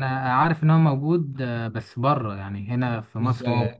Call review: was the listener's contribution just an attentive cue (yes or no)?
no